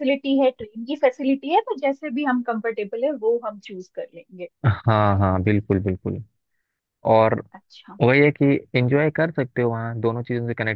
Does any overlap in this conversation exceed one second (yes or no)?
no